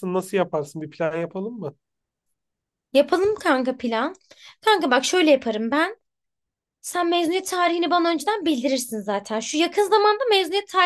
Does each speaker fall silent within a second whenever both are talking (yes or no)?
yes